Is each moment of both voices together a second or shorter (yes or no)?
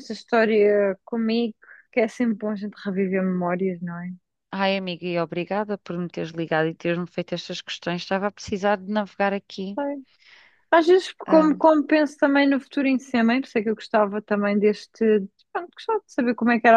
yes